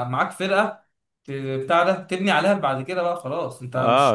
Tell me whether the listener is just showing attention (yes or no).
no